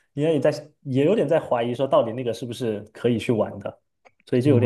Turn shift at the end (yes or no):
yes